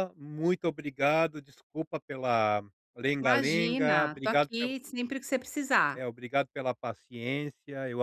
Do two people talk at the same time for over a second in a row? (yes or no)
yes